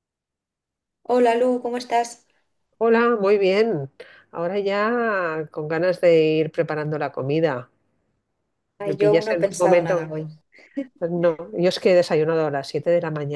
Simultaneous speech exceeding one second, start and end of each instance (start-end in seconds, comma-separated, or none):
8.8-10.1